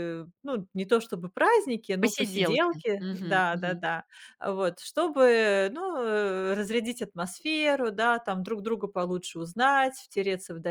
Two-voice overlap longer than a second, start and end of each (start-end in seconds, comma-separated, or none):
2.0-3.8